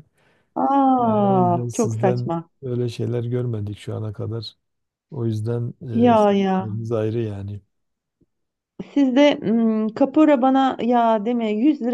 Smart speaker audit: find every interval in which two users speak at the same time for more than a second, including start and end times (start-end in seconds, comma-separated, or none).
1.0-2.5